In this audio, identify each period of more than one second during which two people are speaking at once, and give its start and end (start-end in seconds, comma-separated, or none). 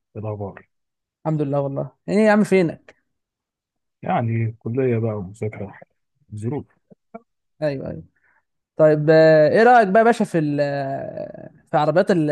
none